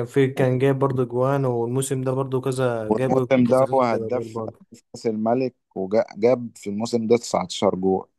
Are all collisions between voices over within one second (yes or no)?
no